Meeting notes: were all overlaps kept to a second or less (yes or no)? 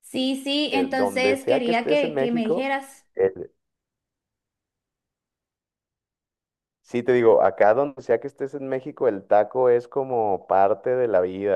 no